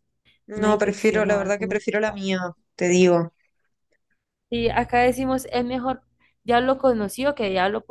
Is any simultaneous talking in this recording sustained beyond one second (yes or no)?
yes